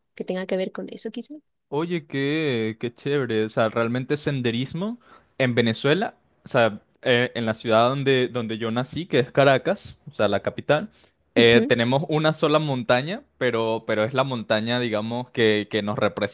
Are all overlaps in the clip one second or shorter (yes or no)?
yes